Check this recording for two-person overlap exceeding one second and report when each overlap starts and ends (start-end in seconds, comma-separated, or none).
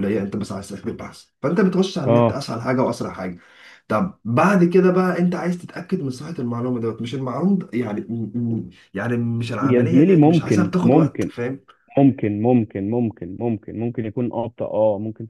9.6-11.3